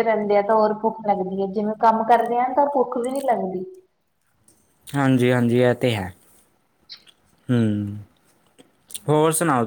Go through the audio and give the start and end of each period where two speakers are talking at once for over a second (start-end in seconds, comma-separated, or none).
none